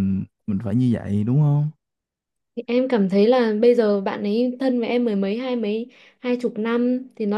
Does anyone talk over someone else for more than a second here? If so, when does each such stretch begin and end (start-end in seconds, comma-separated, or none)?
none